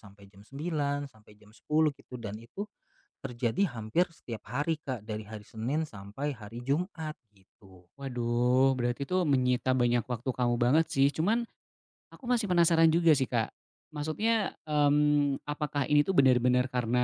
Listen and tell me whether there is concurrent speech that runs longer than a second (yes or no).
no